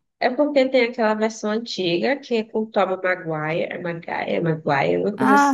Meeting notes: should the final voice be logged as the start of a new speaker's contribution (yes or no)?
yes